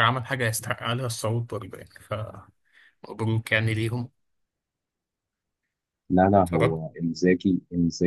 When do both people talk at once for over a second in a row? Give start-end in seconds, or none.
none